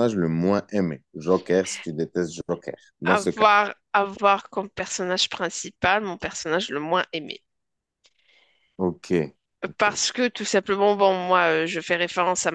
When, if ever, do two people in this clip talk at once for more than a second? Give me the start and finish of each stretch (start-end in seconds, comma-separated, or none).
none